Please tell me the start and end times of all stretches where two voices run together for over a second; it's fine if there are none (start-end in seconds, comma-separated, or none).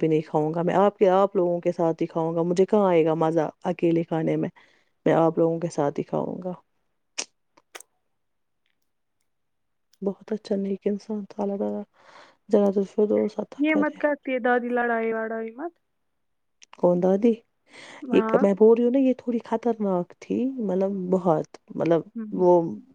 none